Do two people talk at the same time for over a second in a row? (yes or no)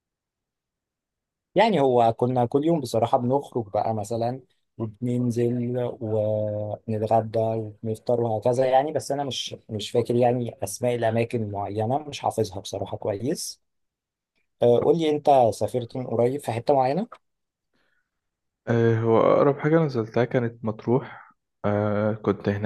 no